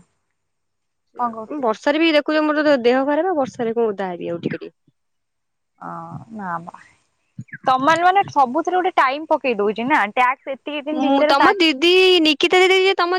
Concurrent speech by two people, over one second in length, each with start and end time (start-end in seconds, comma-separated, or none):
none